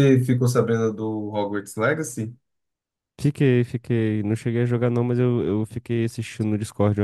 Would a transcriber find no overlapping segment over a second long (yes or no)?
yes